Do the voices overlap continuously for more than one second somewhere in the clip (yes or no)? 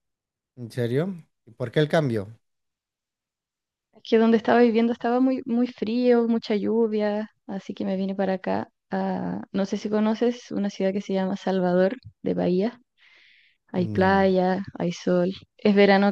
no